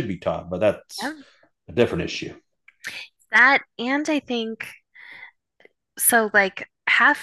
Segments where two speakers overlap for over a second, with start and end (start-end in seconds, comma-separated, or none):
none